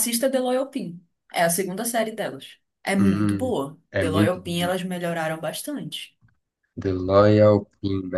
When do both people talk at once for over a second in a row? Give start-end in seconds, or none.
3.0-4.8